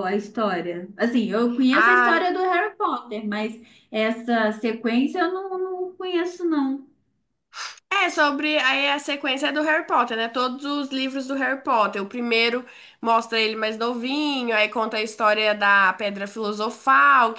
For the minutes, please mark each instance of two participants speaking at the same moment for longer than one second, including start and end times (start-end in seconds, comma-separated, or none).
none